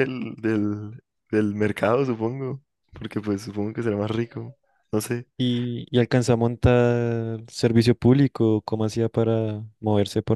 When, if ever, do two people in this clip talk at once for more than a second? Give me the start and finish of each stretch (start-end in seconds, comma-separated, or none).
none